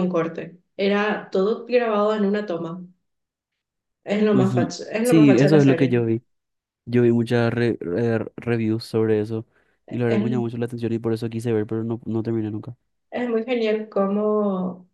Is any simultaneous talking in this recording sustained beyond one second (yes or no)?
yes